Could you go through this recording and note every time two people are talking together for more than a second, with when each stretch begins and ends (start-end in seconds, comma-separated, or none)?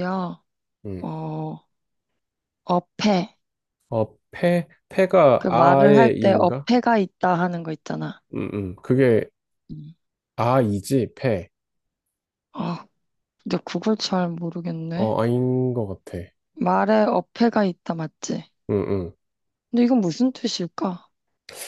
5.4-6.7